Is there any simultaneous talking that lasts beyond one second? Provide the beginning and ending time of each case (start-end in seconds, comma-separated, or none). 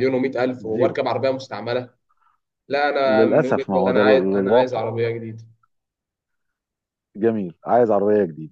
3.1-4.8